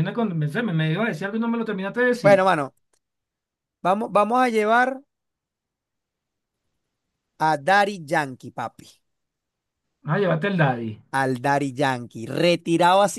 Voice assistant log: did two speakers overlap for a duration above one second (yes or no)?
no